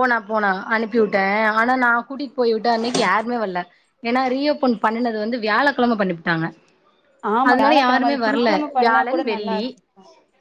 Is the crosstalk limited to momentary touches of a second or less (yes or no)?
no